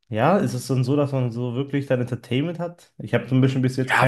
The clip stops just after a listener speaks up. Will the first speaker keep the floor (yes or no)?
no